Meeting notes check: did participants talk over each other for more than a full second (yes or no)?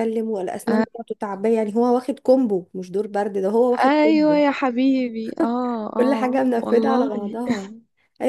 yes